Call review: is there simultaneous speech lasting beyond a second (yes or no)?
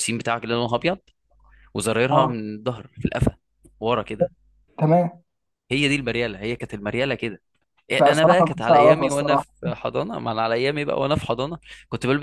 yes